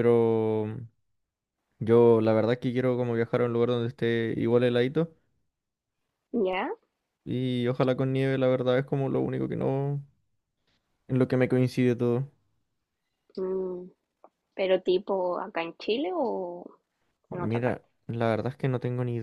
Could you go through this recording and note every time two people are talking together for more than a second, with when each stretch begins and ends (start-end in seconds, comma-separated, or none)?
none